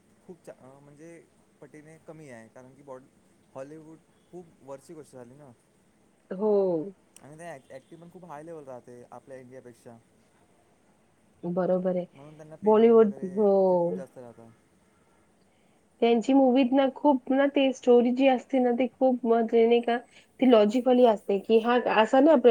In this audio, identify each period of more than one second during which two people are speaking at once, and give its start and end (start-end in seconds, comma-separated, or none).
none